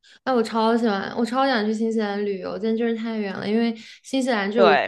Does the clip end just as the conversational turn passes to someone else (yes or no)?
no